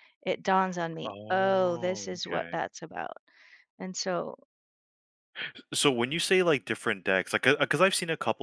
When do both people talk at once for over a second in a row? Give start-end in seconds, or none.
1.0-2.6